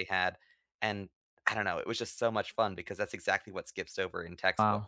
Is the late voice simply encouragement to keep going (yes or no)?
no